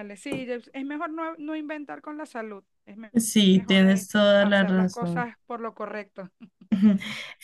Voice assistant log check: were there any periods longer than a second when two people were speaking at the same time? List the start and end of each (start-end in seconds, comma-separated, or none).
3.6-5.3